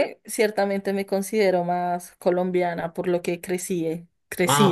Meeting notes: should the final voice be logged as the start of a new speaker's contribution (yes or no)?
yes